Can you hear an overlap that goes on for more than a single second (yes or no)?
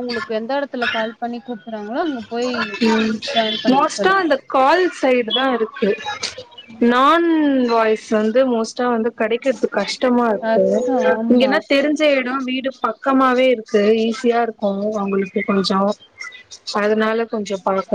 no